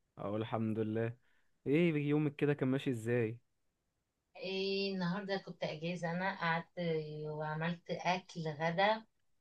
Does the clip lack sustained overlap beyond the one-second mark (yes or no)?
yes